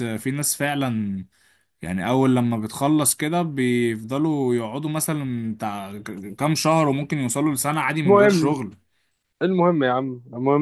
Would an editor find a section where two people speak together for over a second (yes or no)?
no